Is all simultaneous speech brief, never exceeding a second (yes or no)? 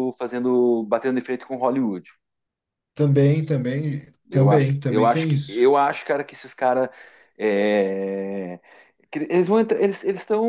no